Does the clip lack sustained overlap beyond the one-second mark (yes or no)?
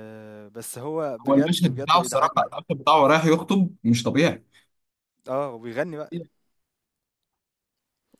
no